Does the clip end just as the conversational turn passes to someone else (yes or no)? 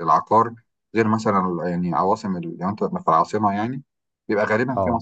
no